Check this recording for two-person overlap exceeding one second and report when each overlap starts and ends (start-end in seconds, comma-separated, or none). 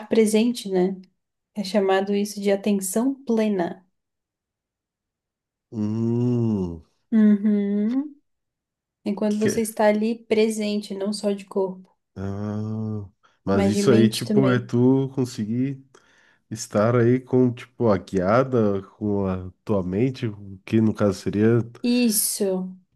13.5-14.7